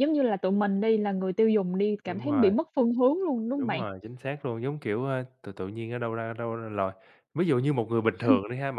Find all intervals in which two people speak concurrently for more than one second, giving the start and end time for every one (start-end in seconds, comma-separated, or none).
none